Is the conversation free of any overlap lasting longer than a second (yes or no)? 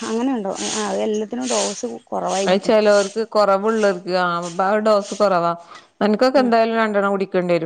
yes